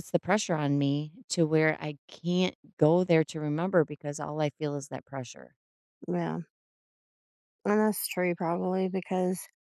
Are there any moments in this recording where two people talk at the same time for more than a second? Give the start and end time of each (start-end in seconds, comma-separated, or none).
none